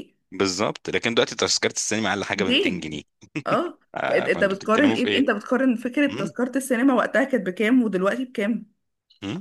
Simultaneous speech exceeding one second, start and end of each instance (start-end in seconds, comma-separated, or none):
3.9-5.3